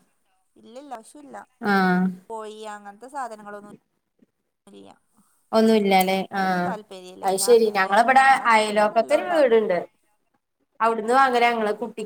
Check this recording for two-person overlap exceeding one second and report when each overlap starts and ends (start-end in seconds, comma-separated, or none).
7.4-9.6